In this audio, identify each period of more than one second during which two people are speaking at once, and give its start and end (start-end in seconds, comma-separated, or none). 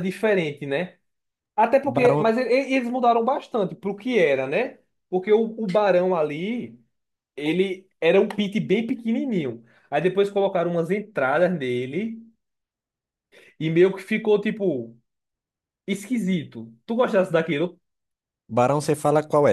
none